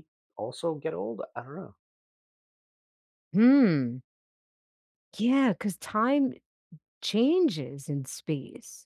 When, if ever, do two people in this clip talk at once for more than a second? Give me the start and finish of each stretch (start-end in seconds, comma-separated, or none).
none